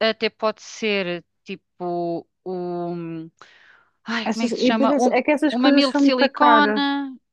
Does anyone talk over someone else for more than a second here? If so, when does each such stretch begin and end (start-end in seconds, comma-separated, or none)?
4.2-6.7